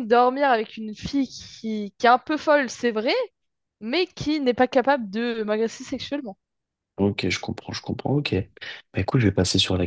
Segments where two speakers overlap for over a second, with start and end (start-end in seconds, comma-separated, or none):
none